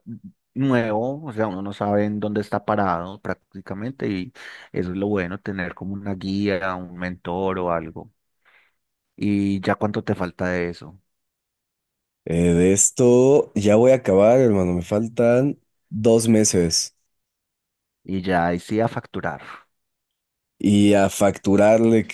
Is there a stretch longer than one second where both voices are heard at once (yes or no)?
no